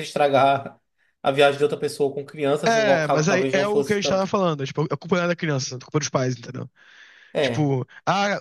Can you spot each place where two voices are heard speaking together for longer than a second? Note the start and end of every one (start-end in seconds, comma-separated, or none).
2.6-4.3